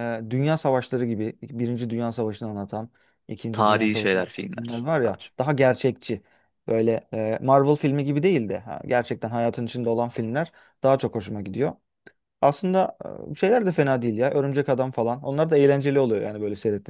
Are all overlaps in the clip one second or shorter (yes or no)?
no